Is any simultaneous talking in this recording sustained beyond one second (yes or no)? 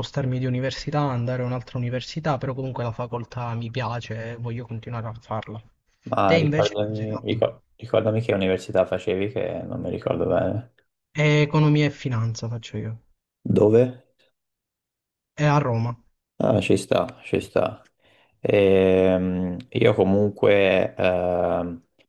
yes